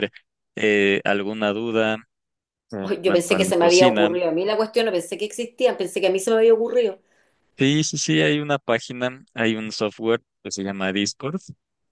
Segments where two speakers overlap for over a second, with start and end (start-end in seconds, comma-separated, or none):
2.8-4.1